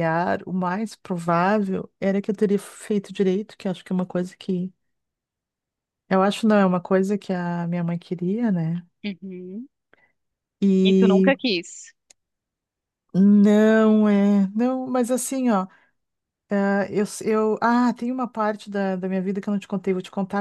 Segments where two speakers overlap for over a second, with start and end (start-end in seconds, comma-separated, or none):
none